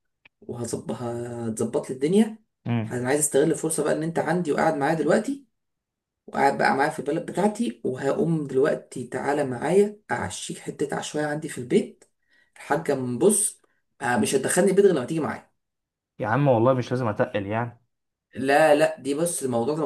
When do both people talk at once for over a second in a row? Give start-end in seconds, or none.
none